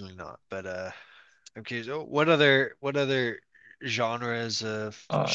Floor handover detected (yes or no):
yes